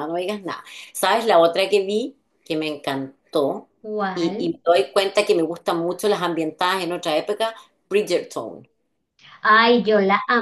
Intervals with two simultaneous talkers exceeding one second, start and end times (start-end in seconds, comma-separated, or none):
none